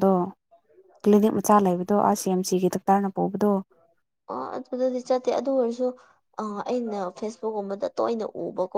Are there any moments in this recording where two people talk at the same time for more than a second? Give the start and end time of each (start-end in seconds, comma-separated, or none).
none